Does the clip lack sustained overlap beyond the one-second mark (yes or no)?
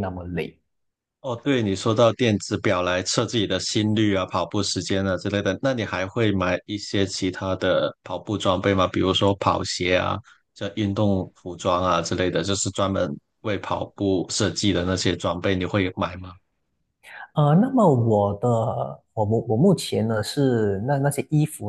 yes